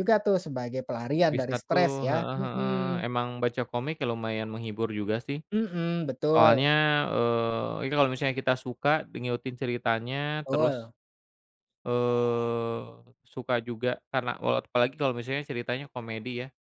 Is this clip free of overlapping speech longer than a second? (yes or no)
no